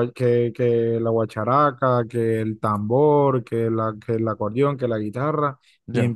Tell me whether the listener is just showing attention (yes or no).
yes